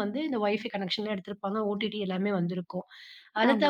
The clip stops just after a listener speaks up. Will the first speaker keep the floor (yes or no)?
yes